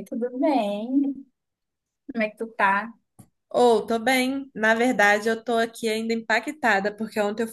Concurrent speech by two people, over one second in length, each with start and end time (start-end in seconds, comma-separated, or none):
none